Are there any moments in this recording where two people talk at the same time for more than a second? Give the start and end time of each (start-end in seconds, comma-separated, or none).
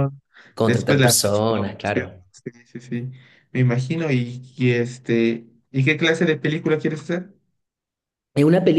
0.6-2.2